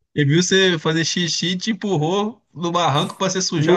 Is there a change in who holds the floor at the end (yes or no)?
yes